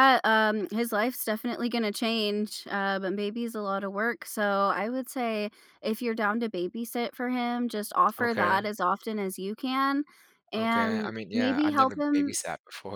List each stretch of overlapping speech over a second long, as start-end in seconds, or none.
10.6-12.3